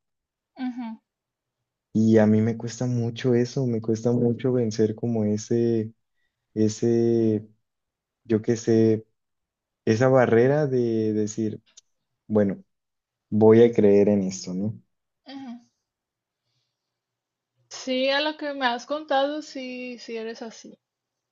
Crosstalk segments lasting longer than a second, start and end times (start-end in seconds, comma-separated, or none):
none